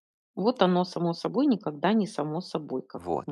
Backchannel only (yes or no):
no